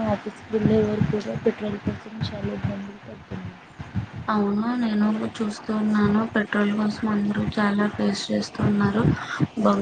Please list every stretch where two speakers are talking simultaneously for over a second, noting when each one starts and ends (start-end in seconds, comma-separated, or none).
none